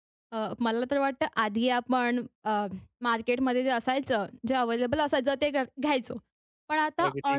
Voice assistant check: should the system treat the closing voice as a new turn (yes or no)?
no